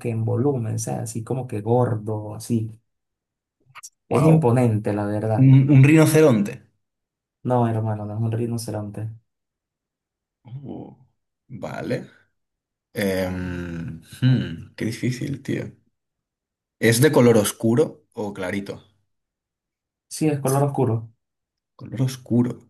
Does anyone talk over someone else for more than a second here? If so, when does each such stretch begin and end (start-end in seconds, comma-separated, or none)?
none